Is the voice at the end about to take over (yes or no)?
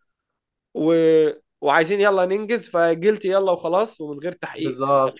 yes